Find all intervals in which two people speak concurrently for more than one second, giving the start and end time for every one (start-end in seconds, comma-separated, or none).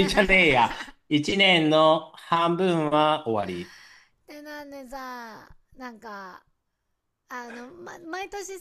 none